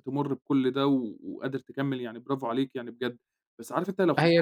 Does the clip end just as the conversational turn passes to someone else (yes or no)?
no